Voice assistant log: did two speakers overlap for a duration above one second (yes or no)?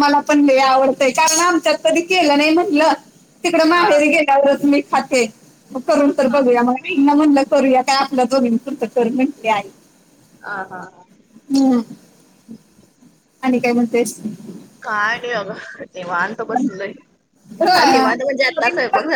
no